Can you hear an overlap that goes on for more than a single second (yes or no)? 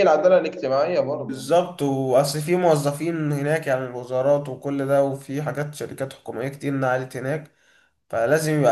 no